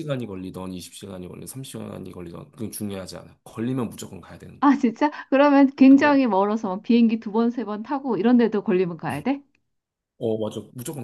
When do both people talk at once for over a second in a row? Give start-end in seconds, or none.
none